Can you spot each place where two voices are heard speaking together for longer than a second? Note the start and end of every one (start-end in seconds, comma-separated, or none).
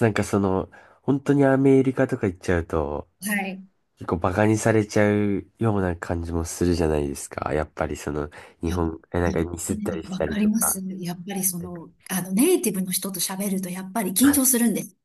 8.7-10.8